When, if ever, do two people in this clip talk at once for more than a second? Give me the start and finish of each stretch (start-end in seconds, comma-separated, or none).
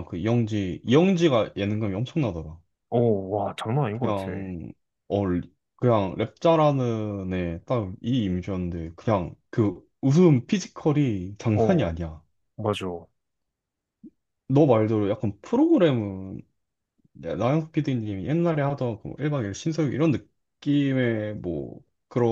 none